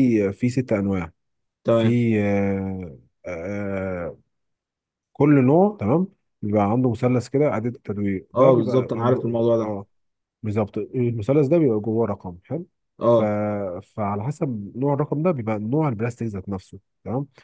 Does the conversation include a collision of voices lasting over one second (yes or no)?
no